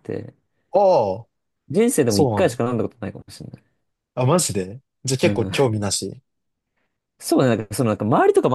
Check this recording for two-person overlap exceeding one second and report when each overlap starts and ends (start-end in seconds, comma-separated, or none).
none